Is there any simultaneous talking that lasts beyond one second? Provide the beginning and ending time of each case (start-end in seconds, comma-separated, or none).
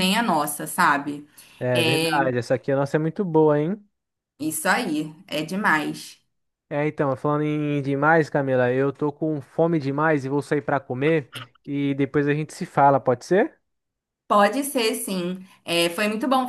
none